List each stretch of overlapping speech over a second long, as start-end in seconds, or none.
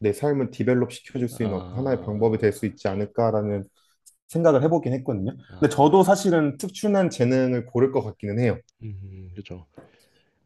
1.3-2.5